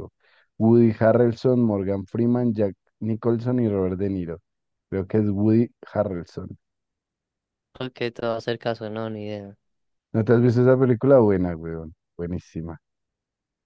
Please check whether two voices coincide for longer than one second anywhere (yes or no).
no